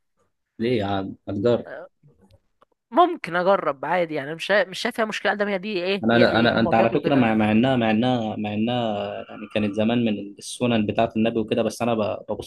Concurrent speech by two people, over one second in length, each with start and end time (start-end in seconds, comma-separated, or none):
6.0-7.6